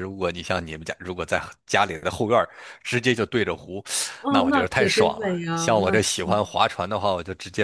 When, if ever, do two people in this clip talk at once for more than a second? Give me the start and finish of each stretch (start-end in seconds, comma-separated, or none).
4.3-6.5